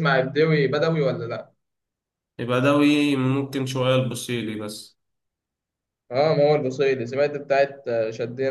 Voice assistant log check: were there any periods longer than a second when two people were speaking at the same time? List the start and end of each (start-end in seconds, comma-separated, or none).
none